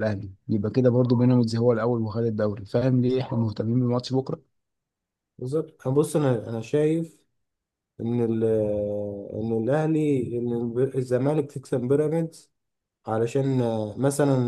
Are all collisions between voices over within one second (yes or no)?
yes